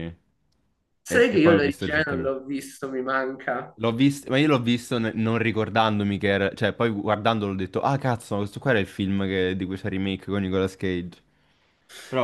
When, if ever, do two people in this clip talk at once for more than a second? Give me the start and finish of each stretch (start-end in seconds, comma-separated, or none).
1.1-2.3